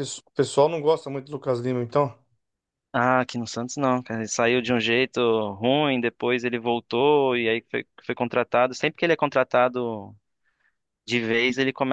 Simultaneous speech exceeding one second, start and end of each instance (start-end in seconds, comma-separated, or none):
none